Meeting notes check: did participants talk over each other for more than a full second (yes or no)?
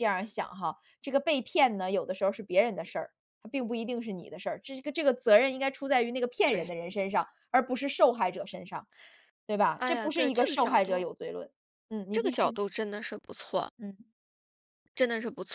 yes